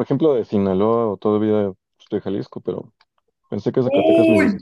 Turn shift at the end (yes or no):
yes